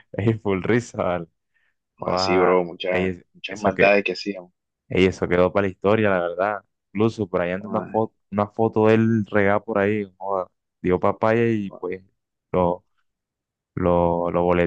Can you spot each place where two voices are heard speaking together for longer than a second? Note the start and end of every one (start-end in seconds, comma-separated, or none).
2.0-4.0